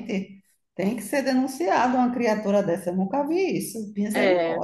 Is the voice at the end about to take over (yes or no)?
yes